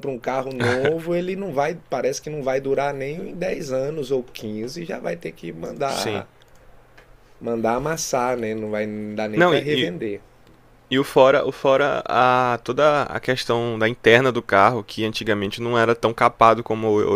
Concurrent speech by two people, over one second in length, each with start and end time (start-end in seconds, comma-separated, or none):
none